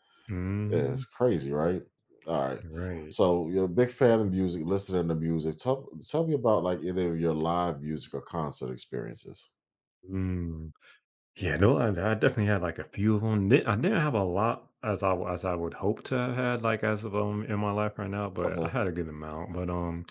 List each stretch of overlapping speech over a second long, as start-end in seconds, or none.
none